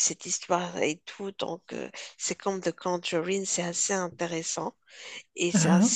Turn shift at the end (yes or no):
no